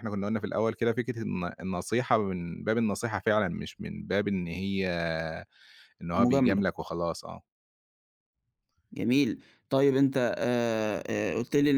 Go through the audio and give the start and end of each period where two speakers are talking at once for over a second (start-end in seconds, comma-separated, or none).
none